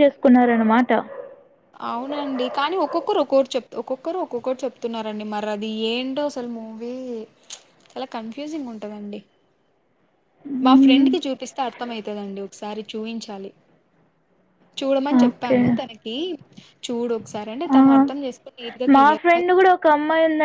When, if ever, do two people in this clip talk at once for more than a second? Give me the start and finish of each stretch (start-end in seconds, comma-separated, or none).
none